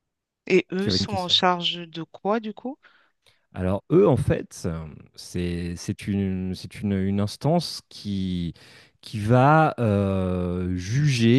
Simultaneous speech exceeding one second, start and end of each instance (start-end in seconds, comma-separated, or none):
none